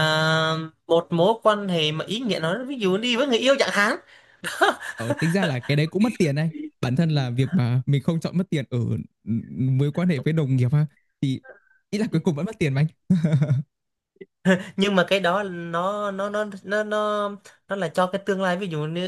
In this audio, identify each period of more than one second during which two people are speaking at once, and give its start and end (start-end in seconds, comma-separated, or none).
none